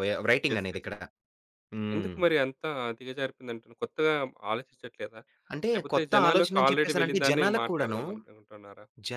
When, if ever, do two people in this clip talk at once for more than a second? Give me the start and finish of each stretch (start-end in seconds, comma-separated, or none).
5.7-8.0